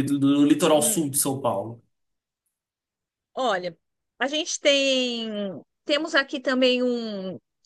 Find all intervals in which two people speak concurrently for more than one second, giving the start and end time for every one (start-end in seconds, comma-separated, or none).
none